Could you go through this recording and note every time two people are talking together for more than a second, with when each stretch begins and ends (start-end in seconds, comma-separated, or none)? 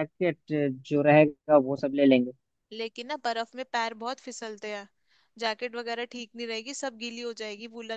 none